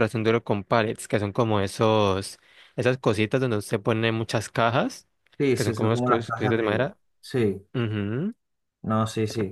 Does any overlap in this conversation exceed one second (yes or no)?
yes